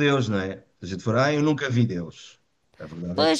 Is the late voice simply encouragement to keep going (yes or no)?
no